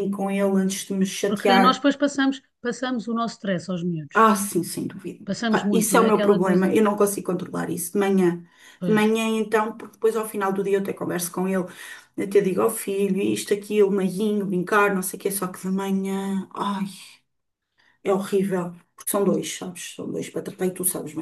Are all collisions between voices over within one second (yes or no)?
no